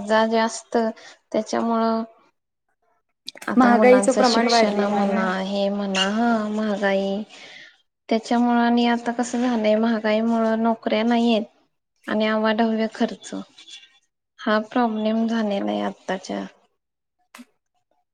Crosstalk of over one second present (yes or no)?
yes